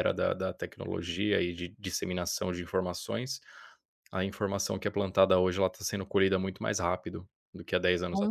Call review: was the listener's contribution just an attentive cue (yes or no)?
no